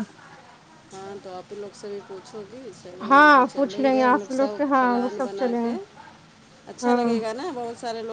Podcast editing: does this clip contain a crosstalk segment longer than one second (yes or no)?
yes